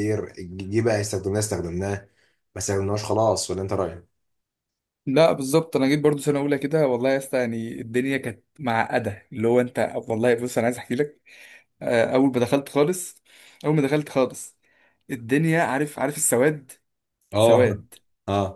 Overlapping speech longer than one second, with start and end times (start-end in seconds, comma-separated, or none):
none